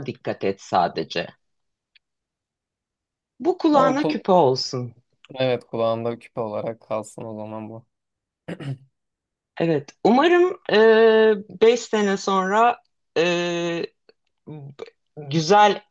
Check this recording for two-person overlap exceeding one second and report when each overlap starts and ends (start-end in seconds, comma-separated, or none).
none